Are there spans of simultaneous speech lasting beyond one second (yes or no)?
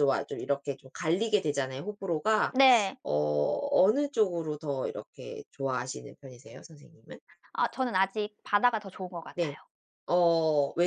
no